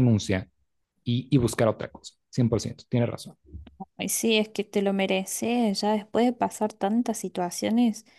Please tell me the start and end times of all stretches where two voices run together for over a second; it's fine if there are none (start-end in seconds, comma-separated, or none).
none